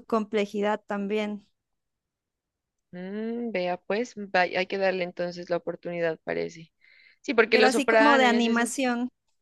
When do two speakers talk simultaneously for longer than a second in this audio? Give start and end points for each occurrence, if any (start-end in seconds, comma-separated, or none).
7.5-8.8